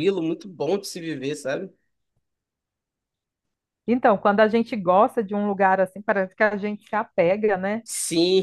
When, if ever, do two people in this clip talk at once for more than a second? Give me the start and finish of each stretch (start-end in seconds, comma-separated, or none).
none